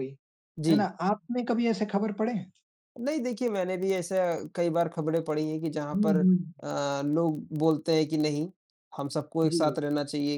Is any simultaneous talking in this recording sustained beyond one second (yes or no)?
no